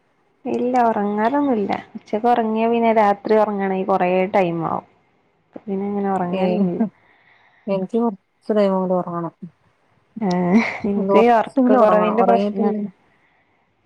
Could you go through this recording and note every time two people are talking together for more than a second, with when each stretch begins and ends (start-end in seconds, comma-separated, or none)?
11.0-12.8